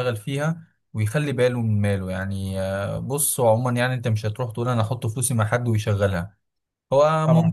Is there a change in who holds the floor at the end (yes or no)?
no